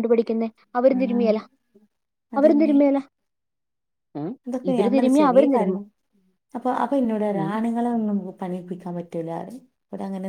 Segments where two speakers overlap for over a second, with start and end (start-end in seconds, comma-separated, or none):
none